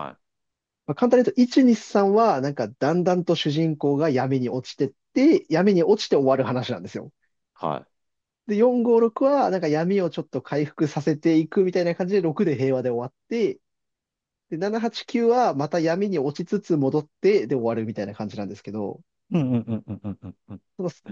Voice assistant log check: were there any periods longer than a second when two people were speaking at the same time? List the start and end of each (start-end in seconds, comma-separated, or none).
none